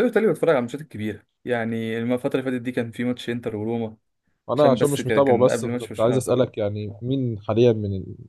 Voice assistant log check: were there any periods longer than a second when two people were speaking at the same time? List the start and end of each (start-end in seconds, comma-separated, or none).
4.5-6.5